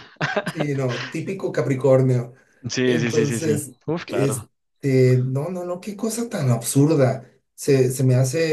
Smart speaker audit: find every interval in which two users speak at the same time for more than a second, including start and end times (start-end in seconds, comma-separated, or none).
2.8-4.3